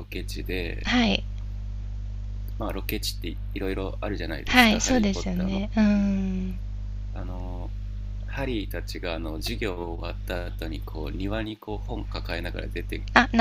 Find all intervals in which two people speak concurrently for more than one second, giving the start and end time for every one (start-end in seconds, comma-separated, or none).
4.5-6.1